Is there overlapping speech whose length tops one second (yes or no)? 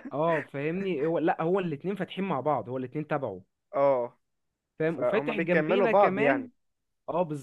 yes